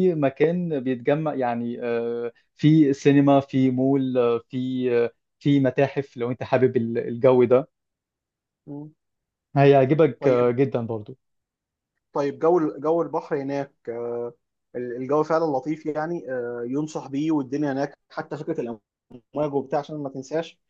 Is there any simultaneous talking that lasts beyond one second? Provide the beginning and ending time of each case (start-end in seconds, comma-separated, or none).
none